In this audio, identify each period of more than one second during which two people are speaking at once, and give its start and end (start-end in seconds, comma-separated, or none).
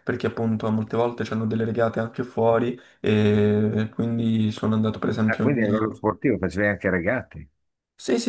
none